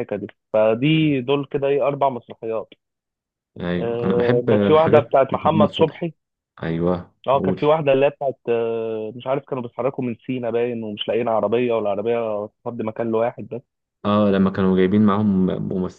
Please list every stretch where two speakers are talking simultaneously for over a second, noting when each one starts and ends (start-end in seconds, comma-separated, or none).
3.8-6.1